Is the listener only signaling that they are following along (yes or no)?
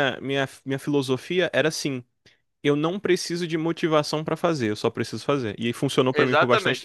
no